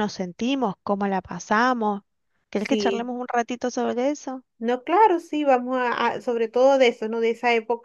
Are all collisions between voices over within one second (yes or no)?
yes